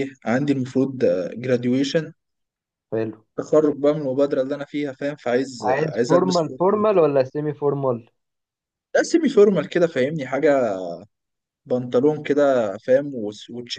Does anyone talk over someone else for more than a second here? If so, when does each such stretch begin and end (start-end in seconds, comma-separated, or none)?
5.6-7.0